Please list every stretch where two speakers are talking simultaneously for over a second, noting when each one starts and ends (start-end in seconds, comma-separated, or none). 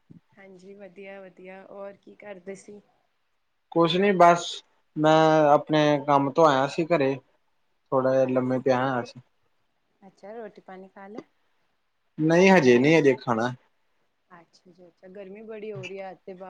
none